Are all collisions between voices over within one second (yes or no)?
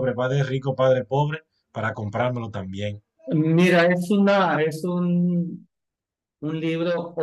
yes